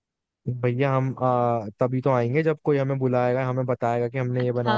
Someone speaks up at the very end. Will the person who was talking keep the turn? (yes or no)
no